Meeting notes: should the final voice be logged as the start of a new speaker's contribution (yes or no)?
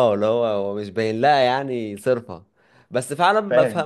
no